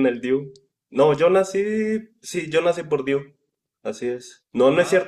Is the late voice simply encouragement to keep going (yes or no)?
yes